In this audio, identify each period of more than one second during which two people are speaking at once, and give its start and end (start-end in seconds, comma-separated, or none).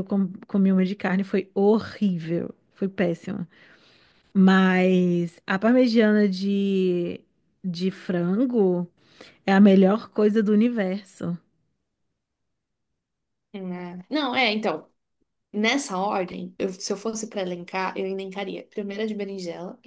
none